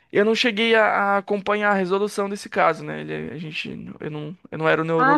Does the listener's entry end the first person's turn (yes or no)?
yes